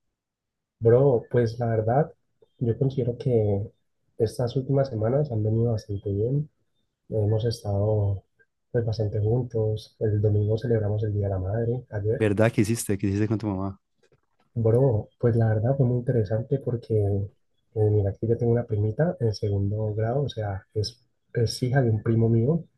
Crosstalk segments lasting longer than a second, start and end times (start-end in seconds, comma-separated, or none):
none